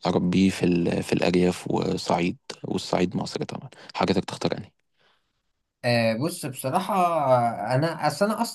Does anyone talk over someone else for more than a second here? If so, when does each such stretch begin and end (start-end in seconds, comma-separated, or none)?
none